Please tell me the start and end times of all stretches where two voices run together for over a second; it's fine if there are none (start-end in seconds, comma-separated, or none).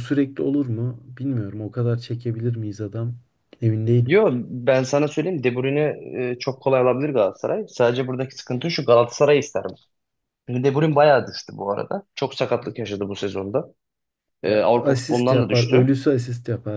14.4-15.9